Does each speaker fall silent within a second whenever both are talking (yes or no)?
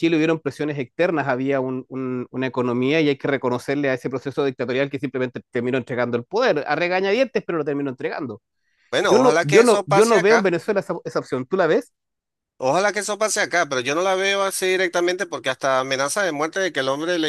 no